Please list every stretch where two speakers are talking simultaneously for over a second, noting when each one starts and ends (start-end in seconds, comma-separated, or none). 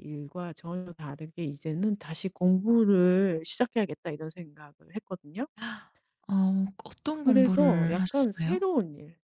7.1-8.6